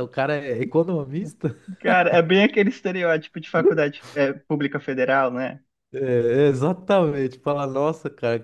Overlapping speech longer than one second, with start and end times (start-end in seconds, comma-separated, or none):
none